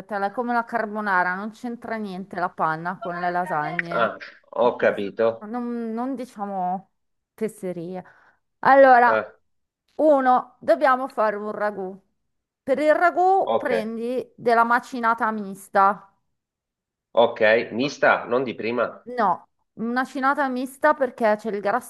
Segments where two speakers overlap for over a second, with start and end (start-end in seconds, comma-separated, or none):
none